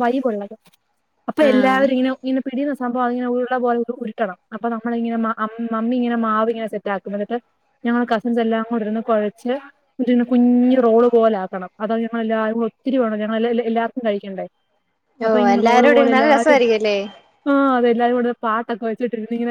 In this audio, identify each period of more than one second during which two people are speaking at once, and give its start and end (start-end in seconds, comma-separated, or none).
15.3-16.6